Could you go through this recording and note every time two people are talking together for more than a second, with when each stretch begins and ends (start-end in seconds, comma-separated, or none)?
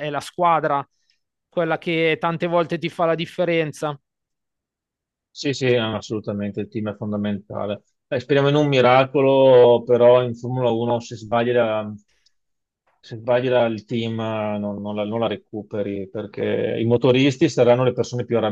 none